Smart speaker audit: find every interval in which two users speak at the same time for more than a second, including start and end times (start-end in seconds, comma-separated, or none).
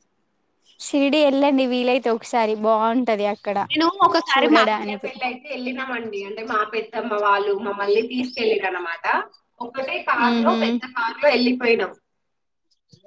none